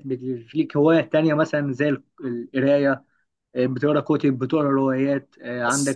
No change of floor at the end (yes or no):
yes